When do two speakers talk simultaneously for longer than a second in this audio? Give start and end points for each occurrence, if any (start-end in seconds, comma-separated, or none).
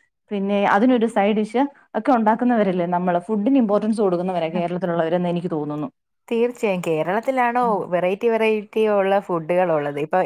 none